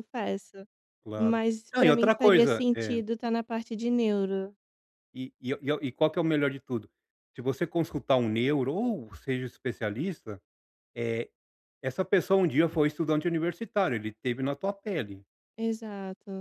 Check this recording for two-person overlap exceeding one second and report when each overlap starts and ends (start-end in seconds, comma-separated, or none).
1.2-3.0